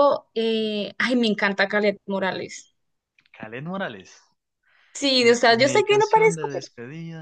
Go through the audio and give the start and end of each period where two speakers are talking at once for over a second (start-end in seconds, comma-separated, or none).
5.2-6.7